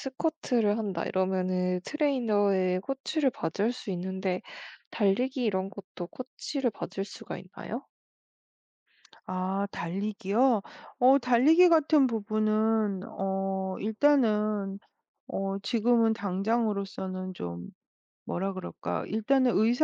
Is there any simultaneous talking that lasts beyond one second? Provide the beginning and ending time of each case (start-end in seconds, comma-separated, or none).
none